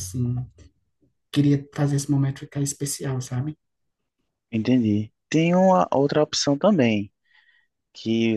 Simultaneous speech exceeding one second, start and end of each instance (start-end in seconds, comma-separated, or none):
none